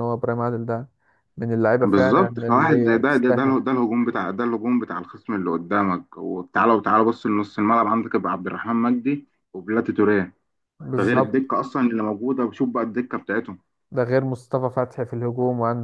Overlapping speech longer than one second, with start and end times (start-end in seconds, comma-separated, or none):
1.8-3.6